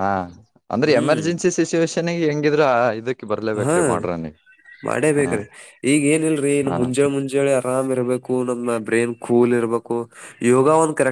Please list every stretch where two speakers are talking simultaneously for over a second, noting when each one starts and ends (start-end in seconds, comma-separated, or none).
none